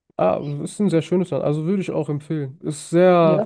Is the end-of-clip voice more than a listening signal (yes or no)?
no